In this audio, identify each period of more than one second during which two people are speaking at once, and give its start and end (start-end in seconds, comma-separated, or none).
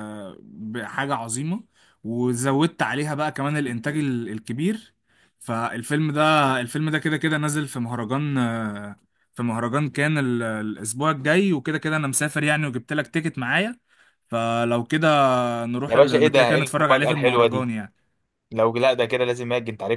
15.8-17.7